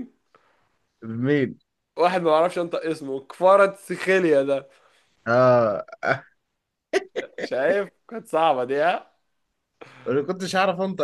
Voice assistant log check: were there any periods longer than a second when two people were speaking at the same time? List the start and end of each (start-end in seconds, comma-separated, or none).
none